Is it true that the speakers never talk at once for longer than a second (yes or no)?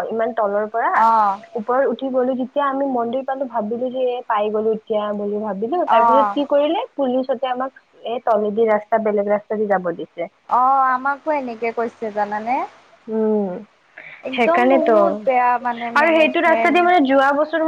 no